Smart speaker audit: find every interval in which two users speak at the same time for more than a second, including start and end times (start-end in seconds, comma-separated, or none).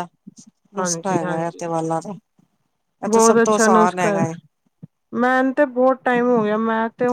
3.1-4.3